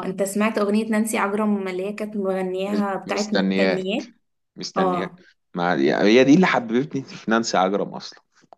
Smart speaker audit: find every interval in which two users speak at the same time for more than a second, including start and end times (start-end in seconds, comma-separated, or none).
2.7-4.0